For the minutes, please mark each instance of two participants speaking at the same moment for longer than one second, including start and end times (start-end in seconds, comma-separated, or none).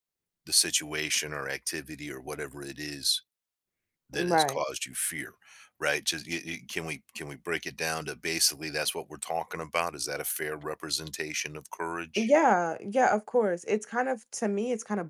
none